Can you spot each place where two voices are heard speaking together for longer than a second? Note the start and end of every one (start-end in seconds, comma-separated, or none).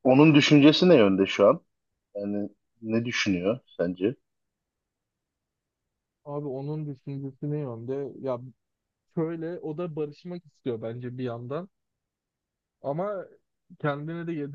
none